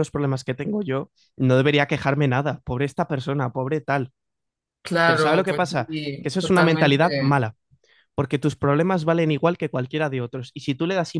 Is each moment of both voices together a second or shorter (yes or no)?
no